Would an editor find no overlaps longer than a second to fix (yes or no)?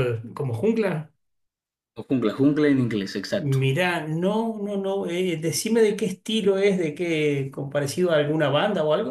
yes